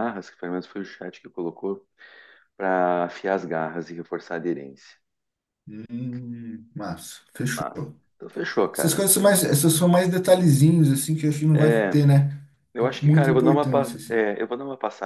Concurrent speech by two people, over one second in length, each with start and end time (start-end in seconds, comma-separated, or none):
13.0-14.2